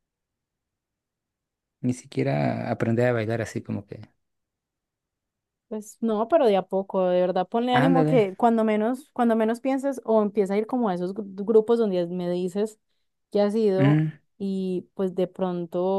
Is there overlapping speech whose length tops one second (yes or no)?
no